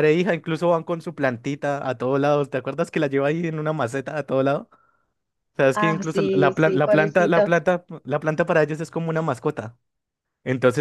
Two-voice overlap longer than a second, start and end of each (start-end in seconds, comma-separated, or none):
5.7-7.5